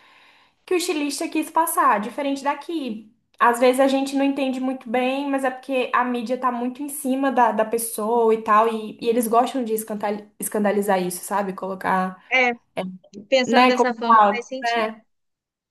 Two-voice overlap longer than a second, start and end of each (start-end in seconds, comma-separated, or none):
13.5-14.9